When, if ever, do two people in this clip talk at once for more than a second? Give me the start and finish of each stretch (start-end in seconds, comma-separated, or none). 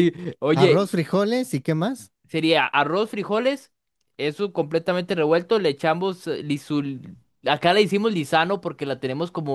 none